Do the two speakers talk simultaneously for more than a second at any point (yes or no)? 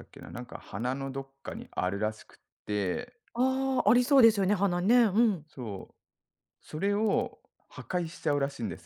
no